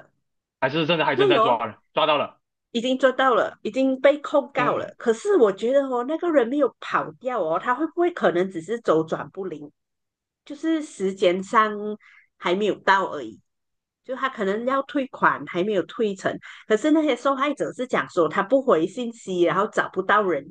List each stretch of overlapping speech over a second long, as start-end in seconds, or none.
none